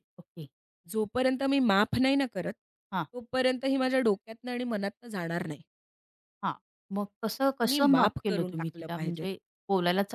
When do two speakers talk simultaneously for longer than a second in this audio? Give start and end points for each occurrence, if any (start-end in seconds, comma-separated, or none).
7.7-9.3